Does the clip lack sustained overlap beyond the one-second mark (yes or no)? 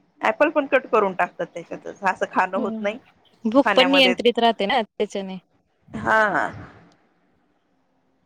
yes